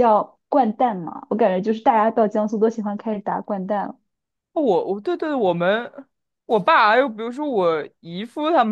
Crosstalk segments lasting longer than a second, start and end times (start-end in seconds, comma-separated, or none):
none